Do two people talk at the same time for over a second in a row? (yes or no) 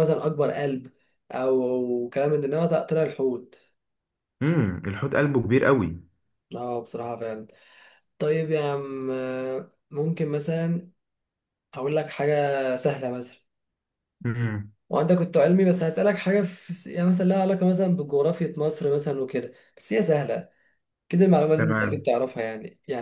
no